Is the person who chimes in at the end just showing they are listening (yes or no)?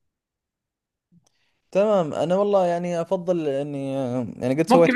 no